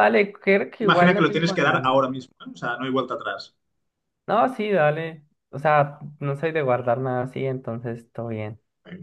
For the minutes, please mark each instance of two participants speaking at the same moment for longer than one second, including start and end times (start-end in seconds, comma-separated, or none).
0.8-2.1